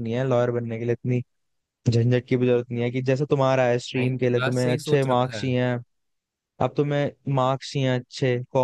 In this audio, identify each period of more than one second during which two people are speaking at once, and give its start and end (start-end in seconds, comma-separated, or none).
4.0-5.5